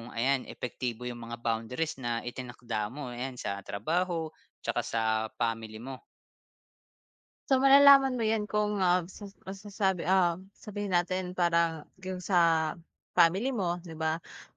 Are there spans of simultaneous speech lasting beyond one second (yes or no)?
no